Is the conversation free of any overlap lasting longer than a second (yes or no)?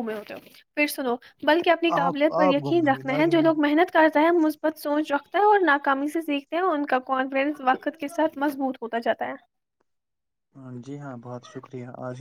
no